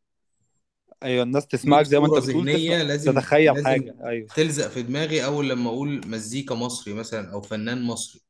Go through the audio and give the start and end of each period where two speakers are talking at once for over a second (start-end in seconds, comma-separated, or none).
1.6-3.9